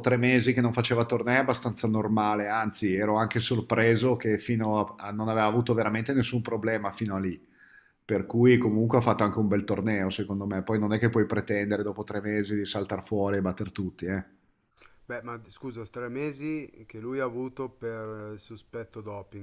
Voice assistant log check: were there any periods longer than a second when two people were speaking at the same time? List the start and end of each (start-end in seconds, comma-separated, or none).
none